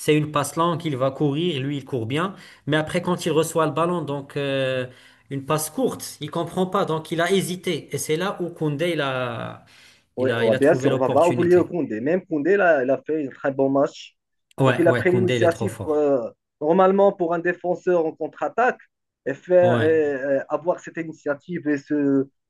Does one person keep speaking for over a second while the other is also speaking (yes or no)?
yes